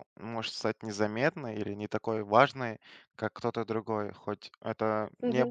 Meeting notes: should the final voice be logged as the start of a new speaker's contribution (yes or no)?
no